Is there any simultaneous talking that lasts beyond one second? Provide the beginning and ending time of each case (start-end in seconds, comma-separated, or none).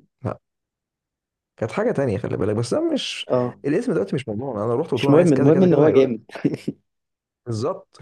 4.9-6.2